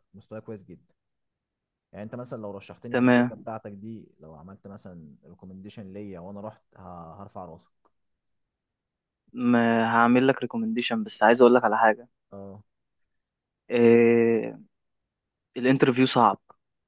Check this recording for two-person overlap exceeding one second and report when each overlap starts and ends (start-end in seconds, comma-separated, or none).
none